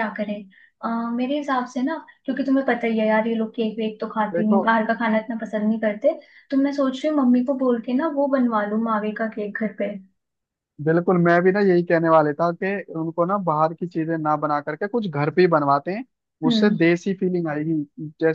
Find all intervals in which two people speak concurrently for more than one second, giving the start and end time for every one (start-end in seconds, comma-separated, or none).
none